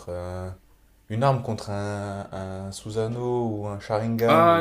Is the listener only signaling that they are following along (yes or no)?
no